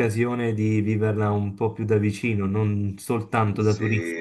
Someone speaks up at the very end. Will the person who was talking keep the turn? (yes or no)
no